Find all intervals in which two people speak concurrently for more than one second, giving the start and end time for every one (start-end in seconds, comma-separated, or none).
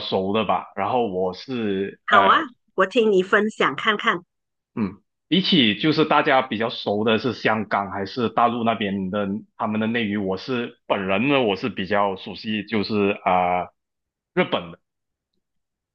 none